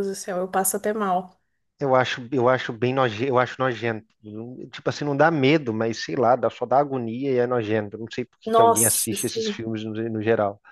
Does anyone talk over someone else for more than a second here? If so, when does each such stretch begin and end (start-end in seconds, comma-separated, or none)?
8.4-9.6